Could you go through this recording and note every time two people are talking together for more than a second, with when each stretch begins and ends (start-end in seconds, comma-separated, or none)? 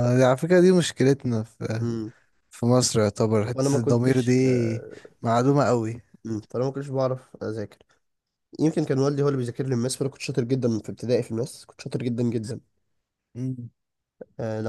3.5-4.8